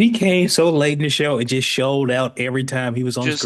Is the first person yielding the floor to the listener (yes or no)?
yes